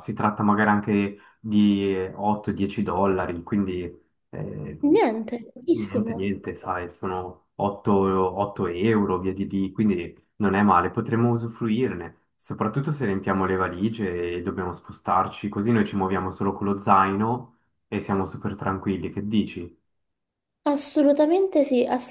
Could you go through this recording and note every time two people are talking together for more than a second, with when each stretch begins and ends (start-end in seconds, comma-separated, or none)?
none